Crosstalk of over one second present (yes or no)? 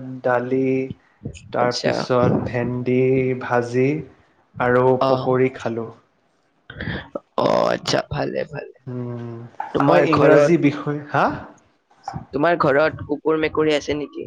yes